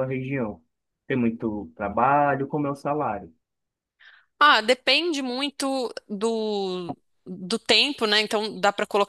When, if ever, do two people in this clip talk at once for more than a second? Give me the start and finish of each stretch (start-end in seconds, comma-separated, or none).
none